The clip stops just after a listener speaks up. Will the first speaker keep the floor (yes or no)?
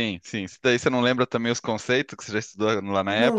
no